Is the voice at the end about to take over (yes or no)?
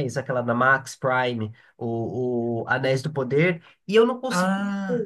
no